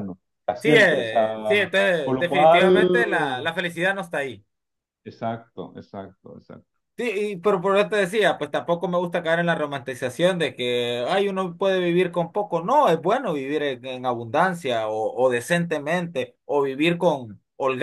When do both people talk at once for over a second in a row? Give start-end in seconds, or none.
0.6-2.9